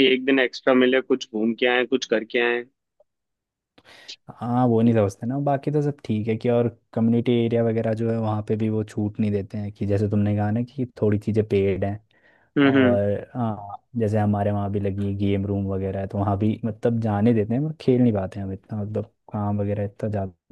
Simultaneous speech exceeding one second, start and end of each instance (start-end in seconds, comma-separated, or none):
none